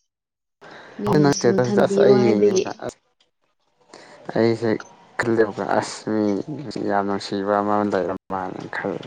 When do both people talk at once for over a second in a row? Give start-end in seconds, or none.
1.1-2.9